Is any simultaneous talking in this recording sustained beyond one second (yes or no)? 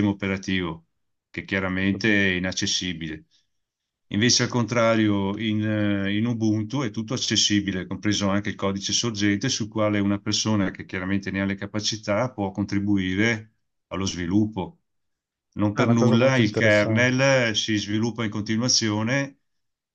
yes